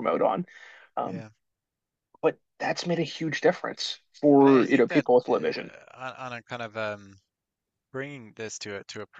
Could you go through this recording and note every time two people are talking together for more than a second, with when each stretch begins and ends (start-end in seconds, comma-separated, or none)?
4.4-5.7